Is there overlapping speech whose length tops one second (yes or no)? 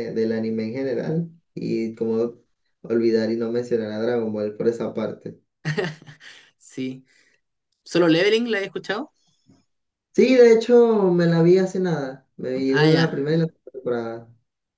no